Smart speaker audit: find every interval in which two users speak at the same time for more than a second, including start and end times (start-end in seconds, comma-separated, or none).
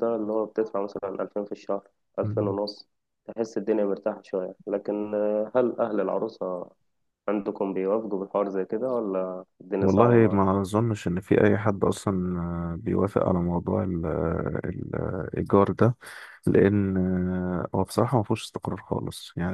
none